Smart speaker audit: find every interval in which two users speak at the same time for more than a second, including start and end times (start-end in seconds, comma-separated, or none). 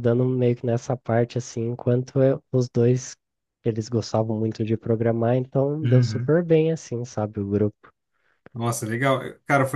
none